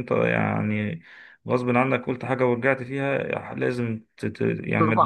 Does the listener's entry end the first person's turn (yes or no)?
yes